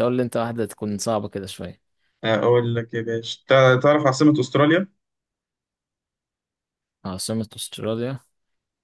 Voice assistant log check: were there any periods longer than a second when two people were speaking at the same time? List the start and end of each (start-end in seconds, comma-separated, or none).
none